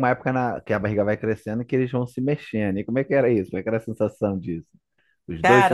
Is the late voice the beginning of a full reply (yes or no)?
yes